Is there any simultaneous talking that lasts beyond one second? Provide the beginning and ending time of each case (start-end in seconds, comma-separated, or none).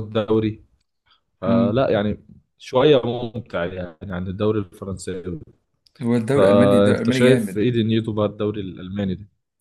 6.3-7.7